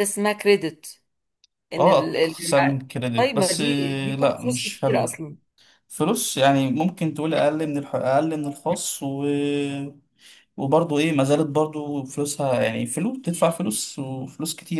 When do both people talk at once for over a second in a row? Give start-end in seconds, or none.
1.8-5.2